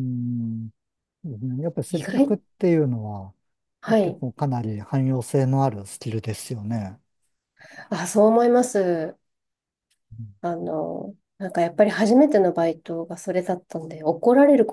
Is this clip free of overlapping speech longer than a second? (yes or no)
yes